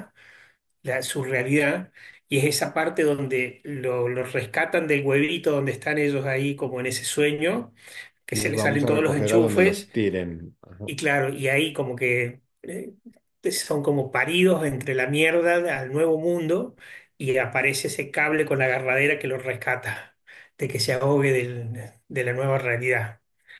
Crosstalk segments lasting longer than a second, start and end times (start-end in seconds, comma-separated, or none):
8.3-9.9